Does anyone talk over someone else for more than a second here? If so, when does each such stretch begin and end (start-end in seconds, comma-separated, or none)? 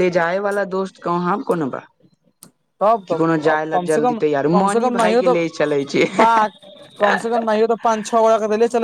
3.1-5.5